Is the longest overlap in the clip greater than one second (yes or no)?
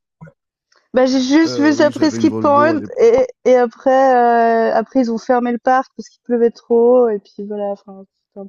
yes